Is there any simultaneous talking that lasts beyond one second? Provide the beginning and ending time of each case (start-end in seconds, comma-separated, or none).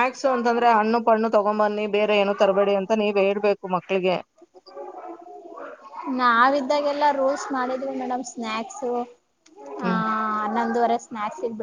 none